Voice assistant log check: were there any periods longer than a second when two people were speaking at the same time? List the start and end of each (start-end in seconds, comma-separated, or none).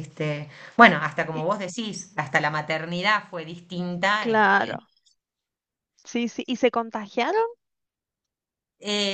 none